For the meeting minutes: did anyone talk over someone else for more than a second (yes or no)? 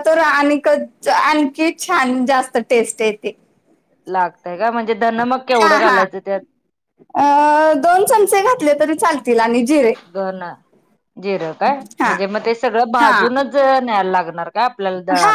no